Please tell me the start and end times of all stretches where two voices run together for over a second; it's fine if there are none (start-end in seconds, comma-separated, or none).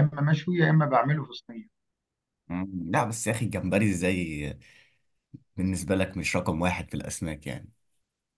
none